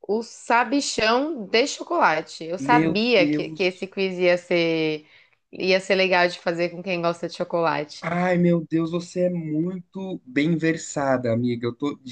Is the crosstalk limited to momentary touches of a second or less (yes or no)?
no